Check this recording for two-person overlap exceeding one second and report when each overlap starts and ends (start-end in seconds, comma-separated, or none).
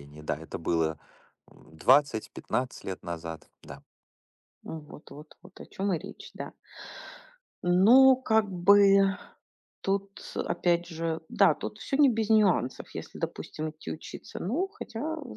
none